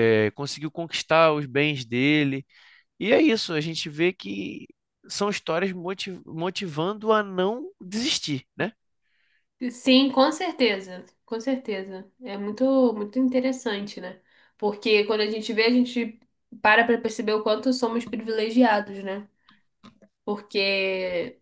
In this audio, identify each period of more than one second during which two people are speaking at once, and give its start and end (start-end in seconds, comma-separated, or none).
none